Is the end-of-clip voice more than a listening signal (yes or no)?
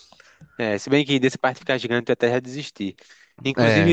no